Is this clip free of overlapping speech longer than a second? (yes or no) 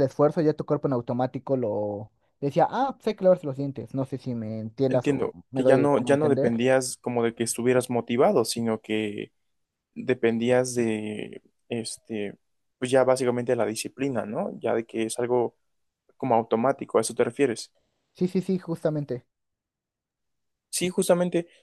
no